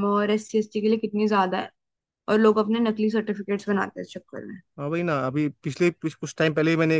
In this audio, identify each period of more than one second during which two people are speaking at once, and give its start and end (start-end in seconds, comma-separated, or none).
none